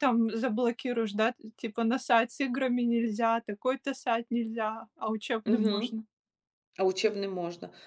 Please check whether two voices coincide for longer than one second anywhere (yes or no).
no